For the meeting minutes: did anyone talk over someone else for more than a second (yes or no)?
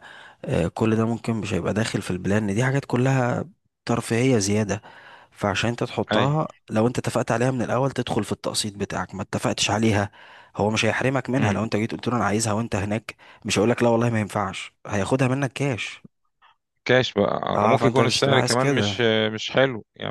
yes